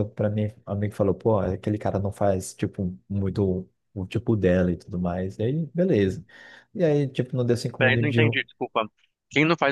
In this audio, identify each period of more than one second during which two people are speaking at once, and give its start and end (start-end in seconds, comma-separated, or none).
none